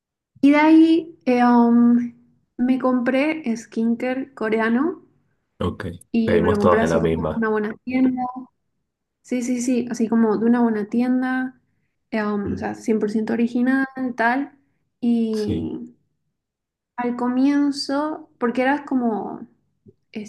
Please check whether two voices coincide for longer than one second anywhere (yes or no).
yes